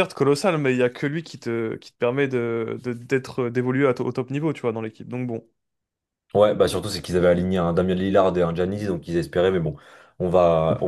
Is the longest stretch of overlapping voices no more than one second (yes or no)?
yes